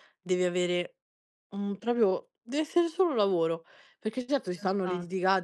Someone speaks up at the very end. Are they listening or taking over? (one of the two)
listening